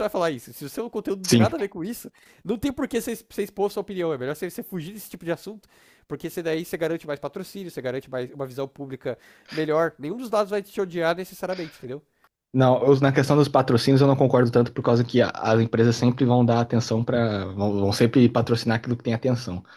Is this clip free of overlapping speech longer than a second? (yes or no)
yes